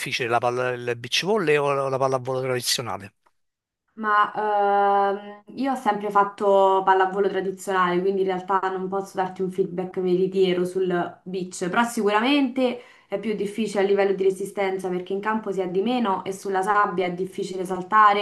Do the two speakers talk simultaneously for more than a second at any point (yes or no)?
no